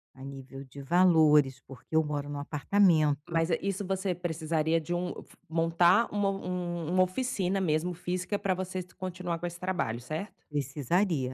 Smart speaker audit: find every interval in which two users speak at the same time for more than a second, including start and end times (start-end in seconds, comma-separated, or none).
none